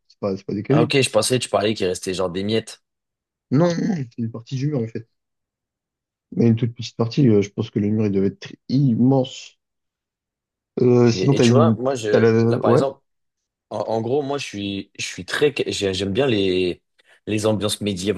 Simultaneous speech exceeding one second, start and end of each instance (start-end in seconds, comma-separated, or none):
11.1-12.8